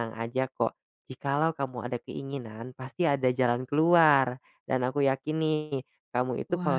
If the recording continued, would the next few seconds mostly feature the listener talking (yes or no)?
no